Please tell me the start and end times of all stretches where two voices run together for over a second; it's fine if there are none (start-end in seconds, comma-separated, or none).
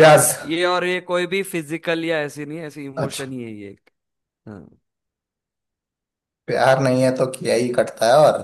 none